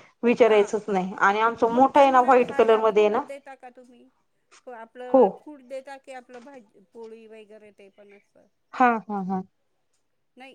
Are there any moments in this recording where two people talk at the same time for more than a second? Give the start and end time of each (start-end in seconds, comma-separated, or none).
1.7-3.2